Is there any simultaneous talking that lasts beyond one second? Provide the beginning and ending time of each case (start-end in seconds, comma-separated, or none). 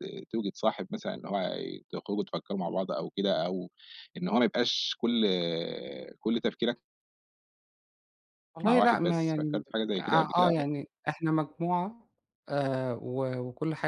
8.7-10.5